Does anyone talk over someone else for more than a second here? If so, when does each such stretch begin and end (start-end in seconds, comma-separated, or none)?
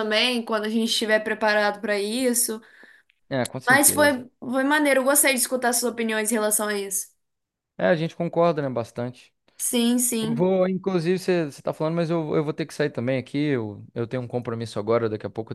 none